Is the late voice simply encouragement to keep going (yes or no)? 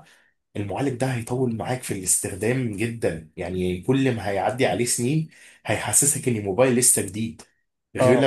yes